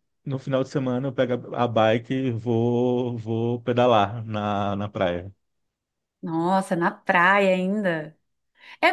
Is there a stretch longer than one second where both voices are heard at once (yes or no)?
no